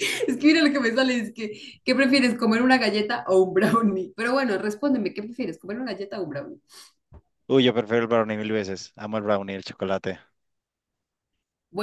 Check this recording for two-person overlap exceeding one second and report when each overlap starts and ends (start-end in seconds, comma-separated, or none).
none